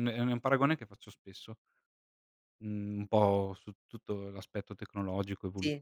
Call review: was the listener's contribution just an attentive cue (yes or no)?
yes